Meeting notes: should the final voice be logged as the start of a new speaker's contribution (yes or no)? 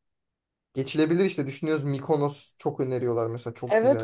yes